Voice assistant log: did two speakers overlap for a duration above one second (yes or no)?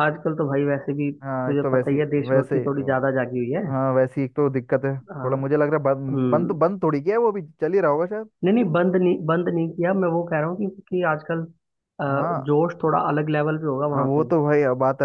yes